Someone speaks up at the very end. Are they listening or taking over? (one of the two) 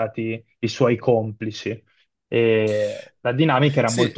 taking over